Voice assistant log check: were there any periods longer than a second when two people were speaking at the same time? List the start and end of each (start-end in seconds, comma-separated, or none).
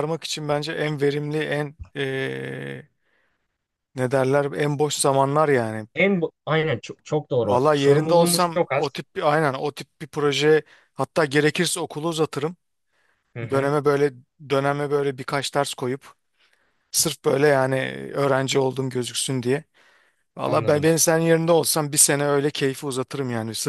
7.4-9.0